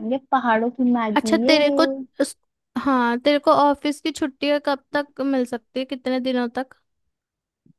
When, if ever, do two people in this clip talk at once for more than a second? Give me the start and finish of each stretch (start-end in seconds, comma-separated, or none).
none